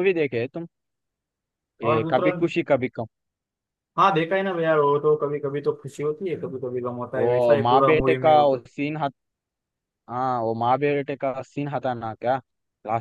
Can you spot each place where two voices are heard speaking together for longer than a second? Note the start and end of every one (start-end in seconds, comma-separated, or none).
7.2-8.6